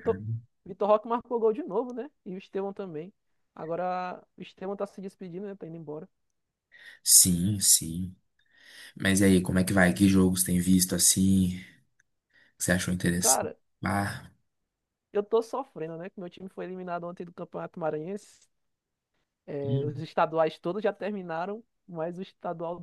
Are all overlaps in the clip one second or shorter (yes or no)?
yes